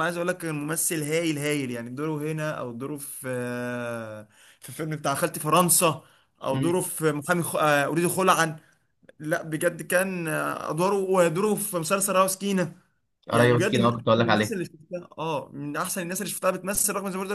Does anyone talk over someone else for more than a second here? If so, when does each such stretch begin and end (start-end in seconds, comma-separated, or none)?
13.3-14.6